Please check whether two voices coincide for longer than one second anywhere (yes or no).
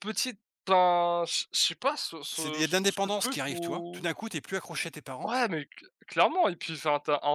yes